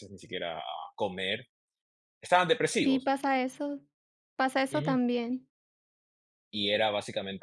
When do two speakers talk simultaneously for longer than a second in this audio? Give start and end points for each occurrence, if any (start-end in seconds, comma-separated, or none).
none